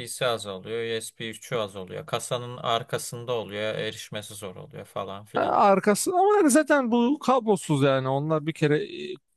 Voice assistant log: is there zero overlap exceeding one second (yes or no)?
yes